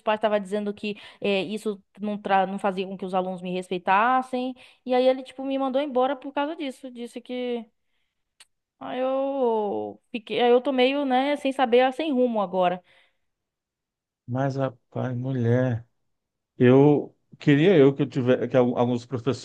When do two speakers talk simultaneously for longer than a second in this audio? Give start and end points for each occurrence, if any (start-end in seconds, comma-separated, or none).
none